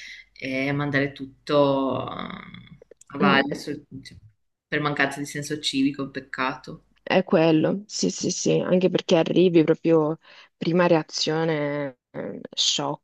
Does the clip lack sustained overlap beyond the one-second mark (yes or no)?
yes